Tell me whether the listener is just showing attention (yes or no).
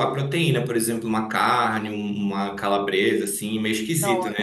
no